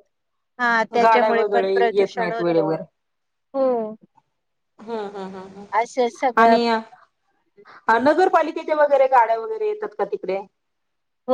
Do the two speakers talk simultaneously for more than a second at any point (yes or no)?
yes